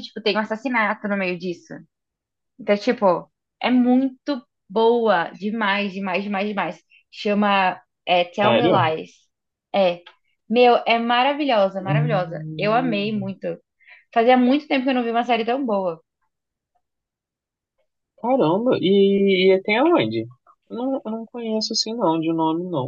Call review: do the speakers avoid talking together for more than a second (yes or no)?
no